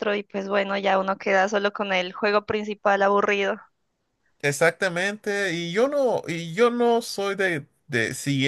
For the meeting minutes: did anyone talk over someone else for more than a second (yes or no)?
no